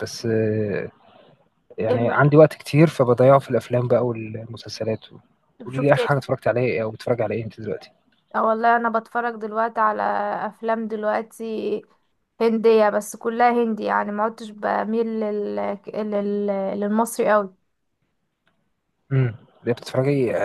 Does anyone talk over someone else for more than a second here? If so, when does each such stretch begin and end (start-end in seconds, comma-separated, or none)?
none